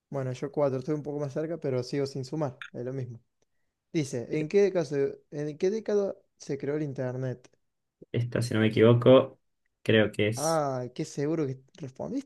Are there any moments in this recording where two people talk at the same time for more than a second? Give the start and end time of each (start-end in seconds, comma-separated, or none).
none